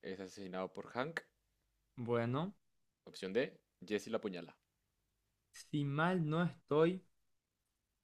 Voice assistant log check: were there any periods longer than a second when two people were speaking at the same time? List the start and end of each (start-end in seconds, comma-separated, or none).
none